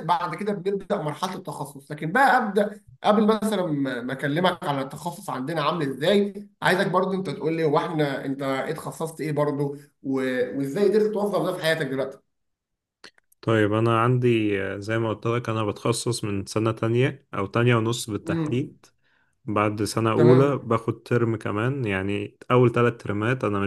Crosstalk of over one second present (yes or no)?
no